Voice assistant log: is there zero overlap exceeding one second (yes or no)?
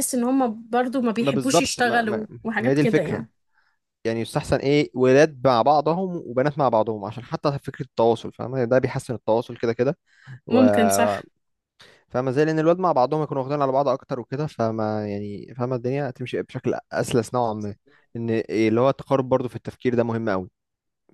no